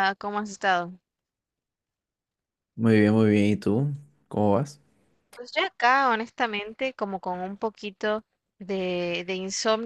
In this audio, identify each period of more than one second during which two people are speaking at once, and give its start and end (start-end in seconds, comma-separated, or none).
none